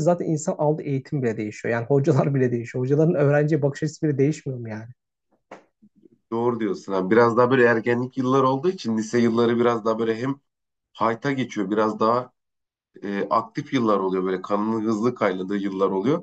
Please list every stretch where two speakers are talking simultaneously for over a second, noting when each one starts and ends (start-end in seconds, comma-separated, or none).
none